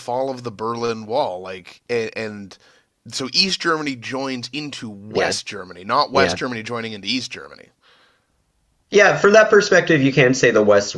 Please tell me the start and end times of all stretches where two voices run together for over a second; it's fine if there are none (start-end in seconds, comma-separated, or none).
none